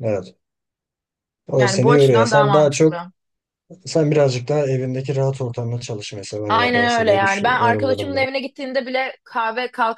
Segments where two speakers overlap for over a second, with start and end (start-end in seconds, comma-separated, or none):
1.6-2.9, 6.5-8.3